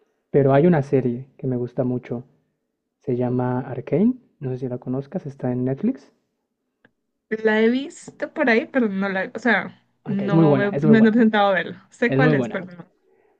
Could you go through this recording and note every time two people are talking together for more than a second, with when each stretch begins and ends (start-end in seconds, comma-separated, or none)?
10.0-11.3